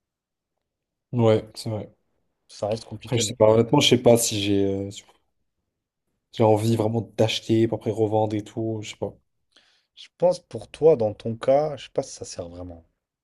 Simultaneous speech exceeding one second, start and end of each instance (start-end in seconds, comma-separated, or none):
none